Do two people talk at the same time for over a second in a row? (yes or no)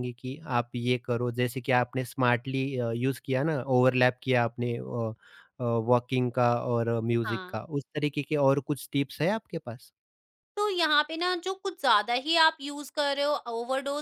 no